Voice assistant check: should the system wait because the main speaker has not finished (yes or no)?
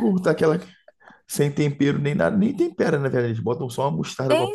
no